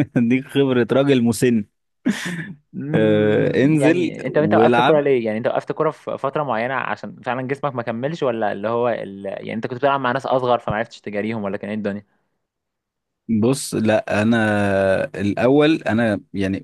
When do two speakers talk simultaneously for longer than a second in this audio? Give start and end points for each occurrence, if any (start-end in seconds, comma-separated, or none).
2.9-5.0